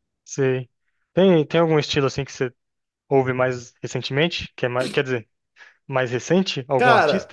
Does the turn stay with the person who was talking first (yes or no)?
no